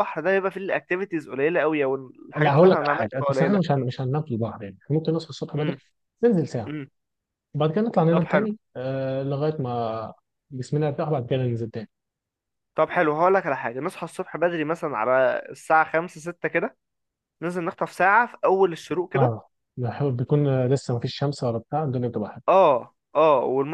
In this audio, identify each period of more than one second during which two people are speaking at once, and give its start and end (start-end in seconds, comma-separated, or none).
2.4-3.7